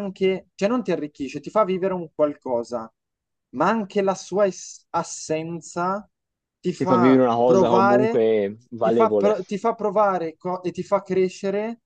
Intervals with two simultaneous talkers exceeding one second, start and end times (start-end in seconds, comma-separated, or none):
6.8-8.2